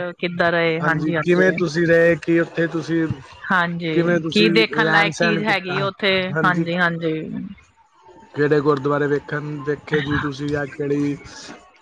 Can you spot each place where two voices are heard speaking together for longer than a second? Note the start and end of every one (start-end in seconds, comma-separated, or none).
3.9-5.8